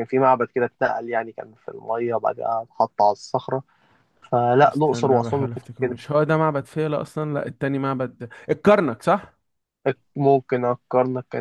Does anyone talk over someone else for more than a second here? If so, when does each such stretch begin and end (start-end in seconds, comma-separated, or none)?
4.6-5.9